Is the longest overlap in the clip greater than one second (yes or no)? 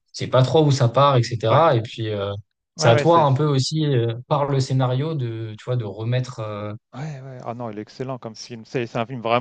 no